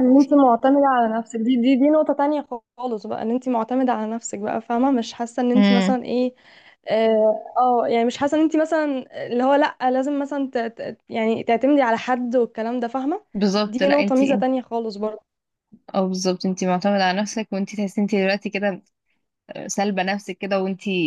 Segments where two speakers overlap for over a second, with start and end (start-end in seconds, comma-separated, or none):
none